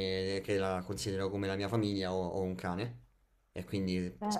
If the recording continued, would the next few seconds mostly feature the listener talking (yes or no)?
no